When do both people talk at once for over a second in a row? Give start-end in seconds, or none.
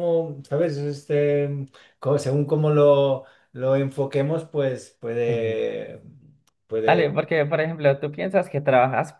none